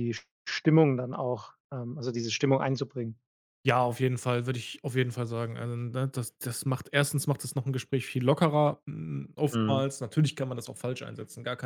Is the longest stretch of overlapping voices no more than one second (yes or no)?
yes